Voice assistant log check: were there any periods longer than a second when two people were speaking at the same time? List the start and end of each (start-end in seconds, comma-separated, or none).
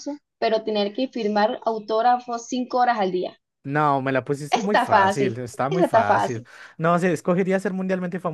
4.5-6.5